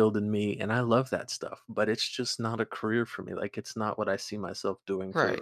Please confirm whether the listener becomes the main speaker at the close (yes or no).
yes